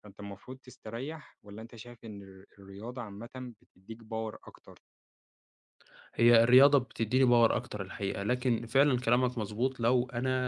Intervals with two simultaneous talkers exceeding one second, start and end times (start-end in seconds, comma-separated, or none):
none